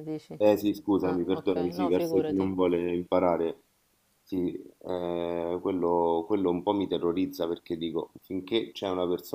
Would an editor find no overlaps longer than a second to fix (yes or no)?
no